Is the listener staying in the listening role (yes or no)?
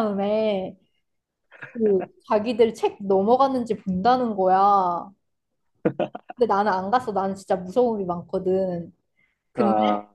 yes